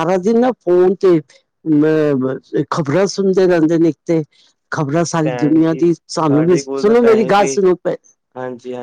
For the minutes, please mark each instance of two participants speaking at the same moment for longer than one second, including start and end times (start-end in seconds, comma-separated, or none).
5.2-7.6